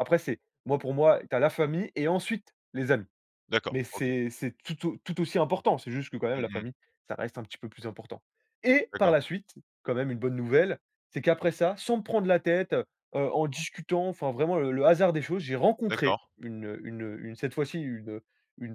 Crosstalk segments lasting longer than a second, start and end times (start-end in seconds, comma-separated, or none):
none